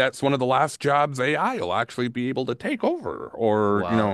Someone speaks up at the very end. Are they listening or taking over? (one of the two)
taking over